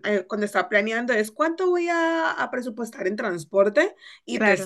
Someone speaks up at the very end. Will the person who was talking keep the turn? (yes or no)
yes